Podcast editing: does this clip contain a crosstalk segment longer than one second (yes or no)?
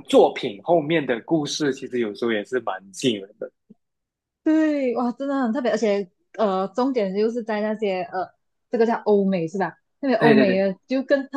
no